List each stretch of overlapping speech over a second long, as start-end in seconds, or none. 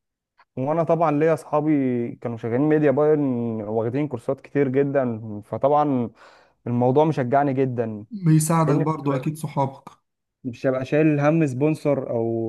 none